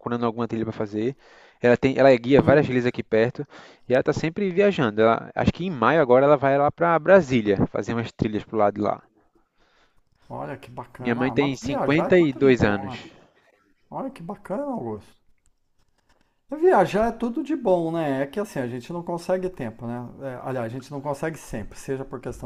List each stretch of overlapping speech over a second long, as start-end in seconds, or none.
11.0-13.0